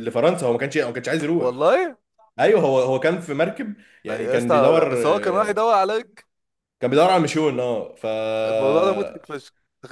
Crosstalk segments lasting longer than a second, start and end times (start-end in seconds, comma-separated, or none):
4.1-5.6